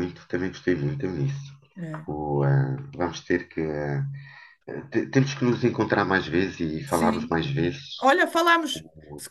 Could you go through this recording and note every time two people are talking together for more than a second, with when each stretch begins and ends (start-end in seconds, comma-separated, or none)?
none